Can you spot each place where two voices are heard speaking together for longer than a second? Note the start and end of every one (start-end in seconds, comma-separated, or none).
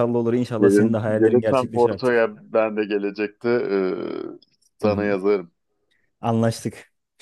0.6-2.3